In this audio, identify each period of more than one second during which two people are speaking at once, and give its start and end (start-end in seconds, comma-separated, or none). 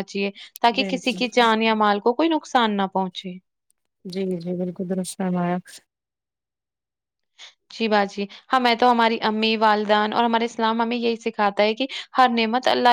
none